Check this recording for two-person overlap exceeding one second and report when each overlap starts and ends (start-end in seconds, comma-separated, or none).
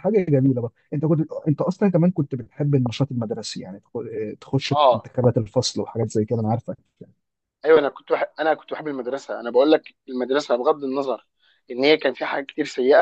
none